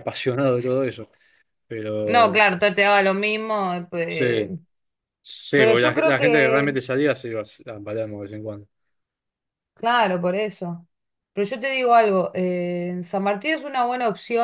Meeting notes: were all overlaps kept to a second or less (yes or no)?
no